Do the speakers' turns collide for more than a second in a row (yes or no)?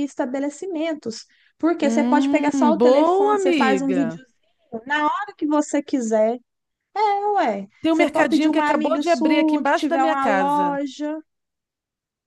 yes